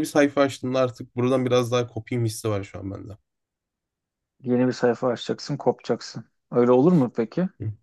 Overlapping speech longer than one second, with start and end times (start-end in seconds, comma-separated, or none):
none